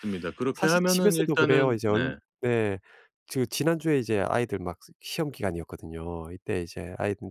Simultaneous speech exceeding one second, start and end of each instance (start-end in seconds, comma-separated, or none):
0.5-2.2